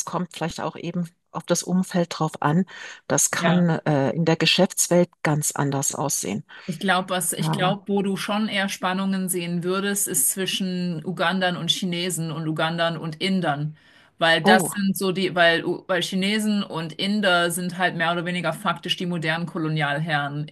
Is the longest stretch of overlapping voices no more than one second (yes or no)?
yes